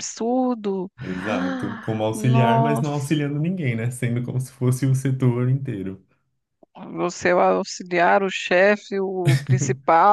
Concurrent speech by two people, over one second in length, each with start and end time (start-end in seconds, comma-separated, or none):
1.0-2.9